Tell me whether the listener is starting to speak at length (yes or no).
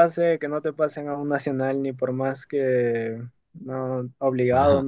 yes